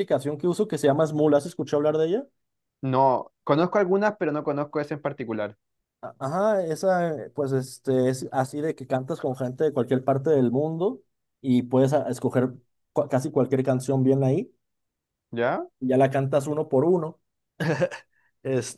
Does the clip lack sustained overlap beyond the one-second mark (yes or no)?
yes